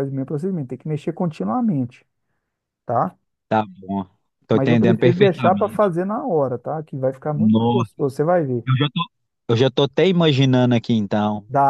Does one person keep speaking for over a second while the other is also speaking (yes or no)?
yes